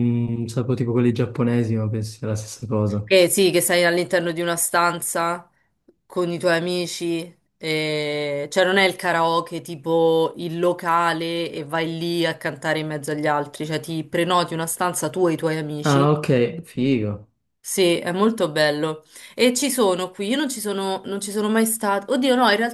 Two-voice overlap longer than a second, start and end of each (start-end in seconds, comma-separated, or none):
none